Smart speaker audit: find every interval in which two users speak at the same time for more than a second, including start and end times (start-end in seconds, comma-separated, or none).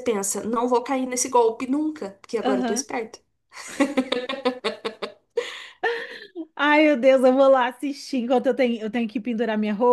none